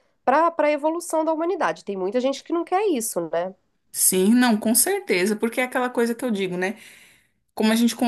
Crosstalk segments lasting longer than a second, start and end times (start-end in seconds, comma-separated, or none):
none